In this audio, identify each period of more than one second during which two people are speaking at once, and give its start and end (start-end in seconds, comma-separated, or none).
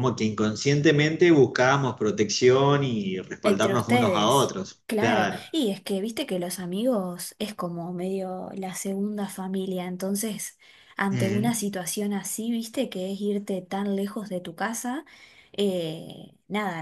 3.4-5.4